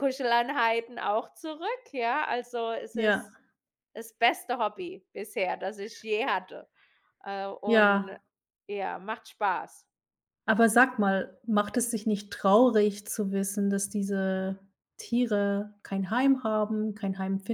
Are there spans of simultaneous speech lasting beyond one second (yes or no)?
no